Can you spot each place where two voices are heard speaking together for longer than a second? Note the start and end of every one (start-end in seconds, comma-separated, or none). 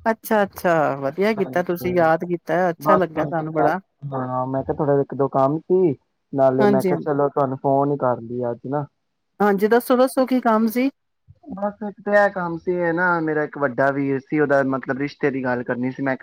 none